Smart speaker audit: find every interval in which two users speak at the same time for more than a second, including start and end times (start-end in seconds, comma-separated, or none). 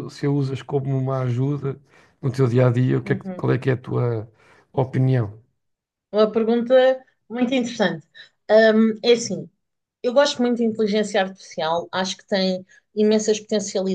none